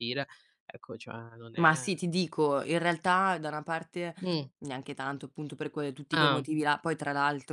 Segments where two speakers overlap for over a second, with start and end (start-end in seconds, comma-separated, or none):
none